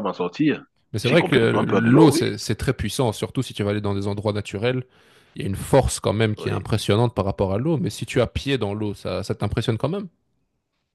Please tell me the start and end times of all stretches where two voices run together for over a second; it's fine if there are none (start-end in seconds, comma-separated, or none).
1.0-2.2